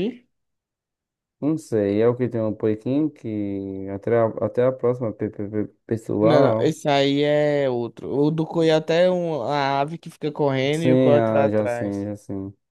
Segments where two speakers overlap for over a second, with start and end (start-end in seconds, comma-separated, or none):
10.7-12.1